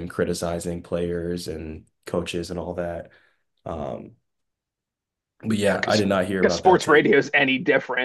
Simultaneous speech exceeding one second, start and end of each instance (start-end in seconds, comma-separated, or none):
5.7-7.1